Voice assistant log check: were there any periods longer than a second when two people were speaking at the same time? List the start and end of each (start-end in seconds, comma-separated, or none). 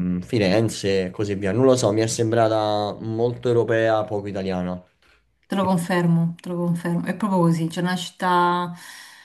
none